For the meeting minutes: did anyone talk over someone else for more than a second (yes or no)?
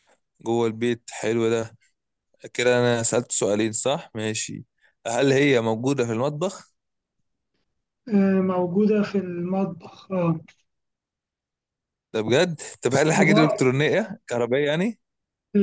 no